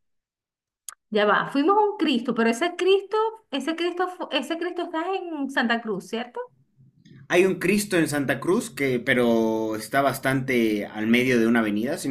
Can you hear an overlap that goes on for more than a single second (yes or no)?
no